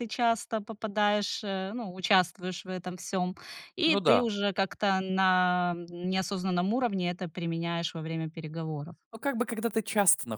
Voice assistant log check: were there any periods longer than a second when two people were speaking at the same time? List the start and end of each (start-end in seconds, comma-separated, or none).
none